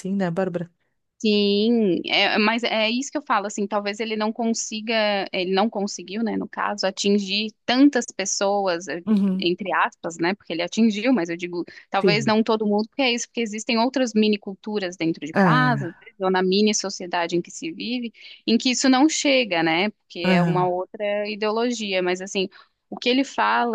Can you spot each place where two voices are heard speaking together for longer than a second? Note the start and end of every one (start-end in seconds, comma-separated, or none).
none